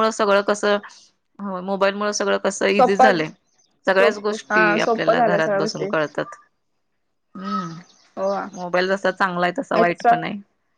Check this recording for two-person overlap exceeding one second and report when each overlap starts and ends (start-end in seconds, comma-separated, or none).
4.0-5.9